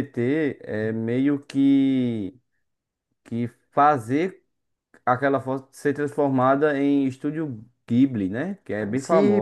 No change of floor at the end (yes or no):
no